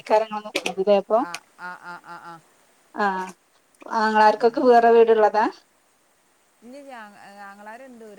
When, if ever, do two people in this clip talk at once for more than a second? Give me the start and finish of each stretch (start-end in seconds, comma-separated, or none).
none